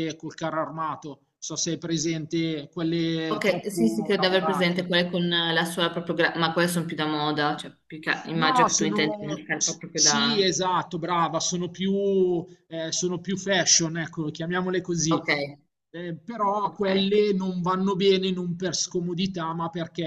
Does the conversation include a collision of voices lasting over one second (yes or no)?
yes